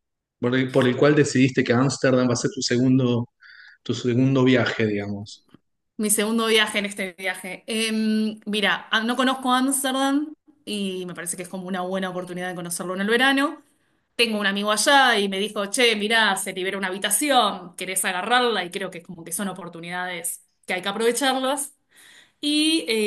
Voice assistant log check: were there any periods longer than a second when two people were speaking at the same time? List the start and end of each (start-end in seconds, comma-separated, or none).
none